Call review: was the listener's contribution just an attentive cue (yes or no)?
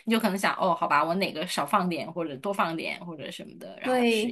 no